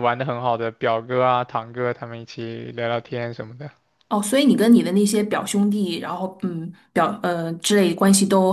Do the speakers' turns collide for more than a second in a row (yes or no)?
no